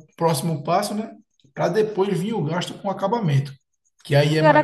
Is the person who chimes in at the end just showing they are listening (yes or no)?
no